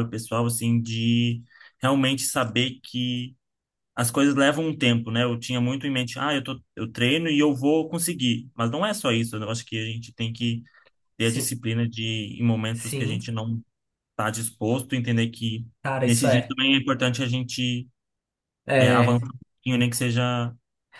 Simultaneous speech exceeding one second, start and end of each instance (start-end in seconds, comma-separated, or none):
none